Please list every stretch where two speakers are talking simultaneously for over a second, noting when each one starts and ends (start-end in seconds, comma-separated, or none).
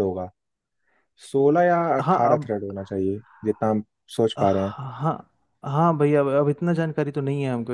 none